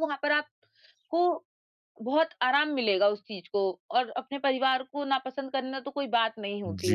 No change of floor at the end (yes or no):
no